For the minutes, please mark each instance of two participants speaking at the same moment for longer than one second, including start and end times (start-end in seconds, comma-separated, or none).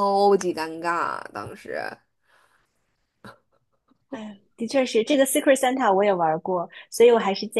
none